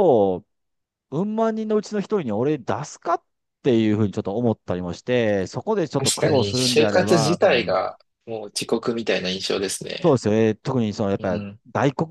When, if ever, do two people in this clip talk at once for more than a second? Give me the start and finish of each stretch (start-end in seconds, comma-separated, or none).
6.0-7.8